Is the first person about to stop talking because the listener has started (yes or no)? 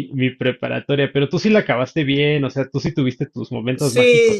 yes